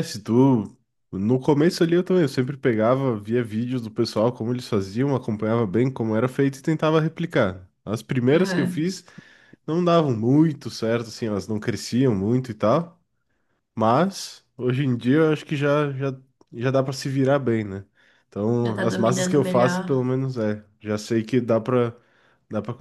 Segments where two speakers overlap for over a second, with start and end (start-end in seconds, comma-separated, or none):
18.6-19.8